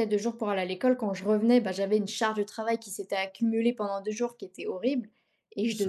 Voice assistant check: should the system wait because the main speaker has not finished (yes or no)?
yes